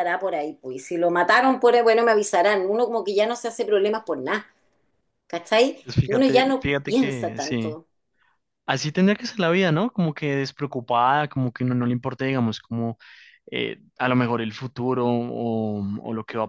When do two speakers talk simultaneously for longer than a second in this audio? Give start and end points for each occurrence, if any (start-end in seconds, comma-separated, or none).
5.8-7.8